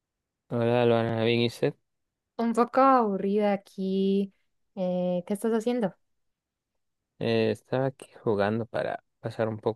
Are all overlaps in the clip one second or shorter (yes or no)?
yes